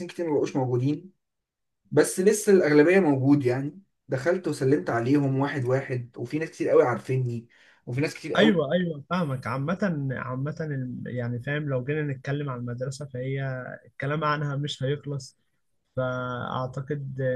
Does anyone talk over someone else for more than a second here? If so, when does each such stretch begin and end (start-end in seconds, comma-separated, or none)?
none